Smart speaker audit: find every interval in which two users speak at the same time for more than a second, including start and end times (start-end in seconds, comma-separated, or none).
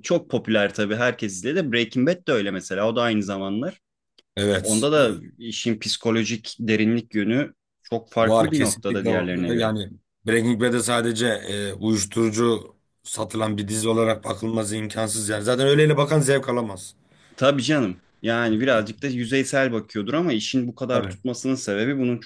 8.2-9.7